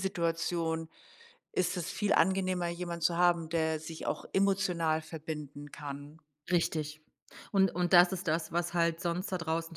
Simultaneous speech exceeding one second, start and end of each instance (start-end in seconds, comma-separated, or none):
none